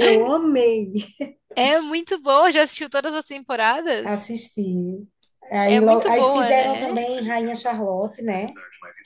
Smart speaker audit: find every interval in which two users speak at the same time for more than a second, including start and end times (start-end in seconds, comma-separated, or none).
5.6-6.9